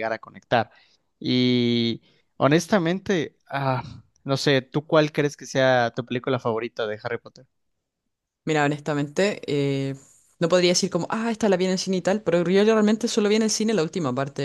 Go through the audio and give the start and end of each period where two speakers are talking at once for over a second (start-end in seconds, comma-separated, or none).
none